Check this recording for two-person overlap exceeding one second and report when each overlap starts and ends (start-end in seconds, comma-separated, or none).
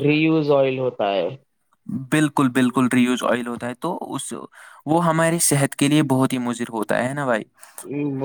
none